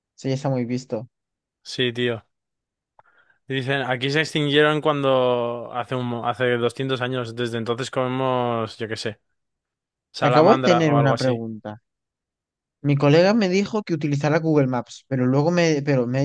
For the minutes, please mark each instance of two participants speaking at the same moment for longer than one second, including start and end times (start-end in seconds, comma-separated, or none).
10.2-11.4